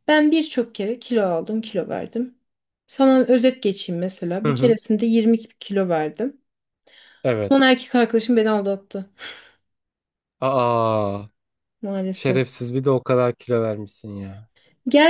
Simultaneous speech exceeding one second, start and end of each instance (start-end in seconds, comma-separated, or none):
none